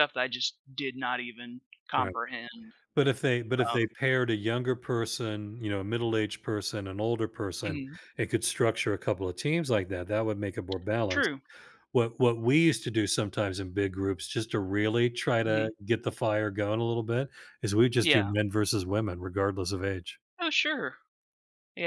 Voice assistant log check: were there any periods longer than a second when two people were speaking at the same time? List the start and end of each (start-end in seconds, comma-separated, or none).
none